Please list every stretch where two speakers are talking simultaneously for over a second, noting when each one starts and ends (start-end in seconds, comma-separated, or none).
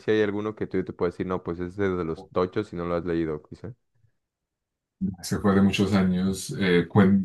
none